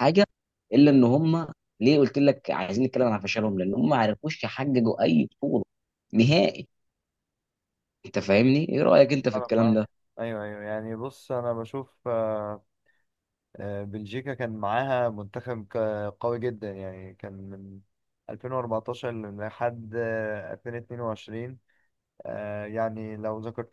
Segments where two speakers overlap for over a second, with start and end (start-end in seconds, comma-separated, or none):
none